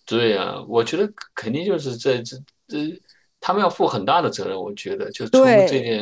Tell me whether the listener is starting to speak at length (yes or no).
no